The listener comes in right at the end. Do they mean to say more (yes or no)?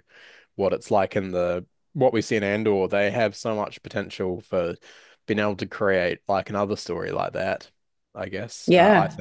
yes